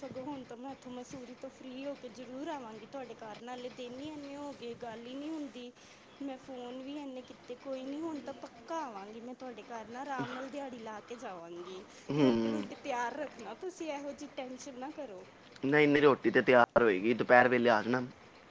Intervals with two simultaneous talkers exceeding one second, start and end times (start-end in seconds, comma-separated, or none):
none